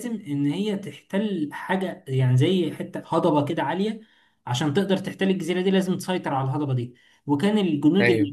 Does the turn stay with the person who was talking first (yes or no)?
yes